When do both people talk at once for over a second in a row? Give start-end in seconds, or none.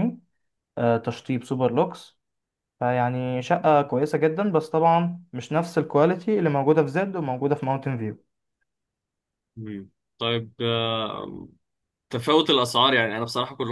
none